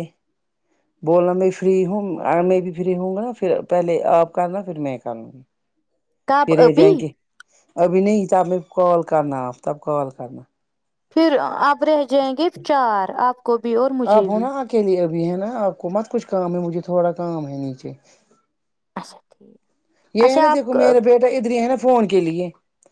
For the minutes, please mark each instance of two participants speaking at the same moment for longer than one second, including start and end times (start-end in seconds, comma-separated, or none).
none